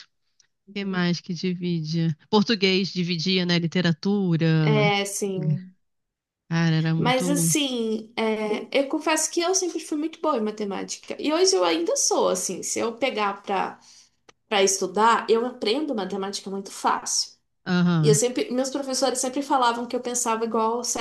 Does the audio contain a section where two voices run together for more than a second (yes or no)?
no